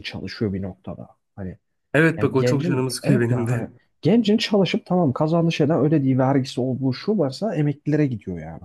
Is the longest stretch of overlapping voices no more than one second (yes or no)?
no